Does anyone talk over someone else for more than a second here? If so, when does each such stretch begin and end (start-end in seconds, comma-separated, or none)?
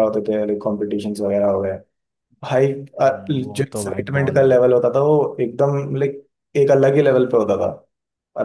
3.0-4.7